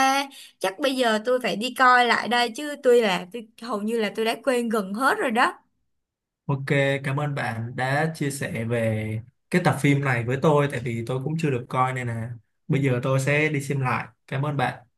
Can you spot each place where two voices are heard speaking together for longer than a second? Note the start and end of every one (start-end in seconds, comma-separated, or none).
none